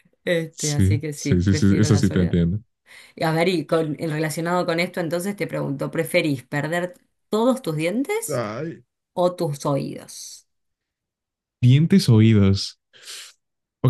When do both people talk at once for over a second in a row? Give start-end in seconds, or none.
0.5-2.4